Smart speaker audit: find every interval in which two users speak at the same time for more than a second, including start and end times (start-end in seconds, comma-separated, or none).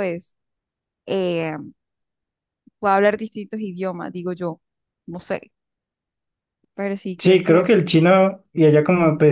none